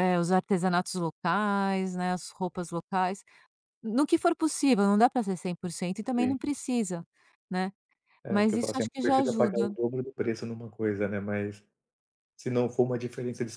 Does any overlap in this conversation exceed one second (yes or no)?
yes